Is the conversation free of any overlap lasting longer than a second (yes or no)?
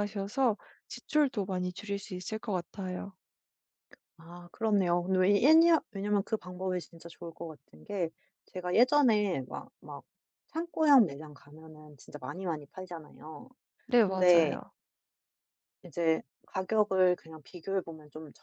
yes